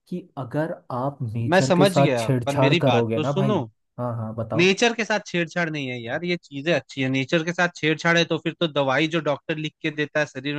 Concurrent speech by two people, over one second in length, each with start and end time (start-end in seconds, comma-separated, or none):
1.5-3.5